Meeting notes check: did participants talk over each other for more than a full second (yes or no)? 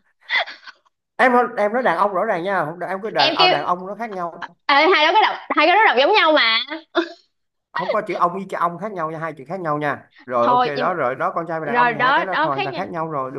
yes